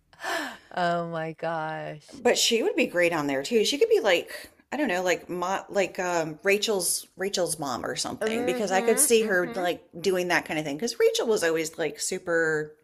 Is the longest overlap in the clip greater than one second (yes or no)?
yes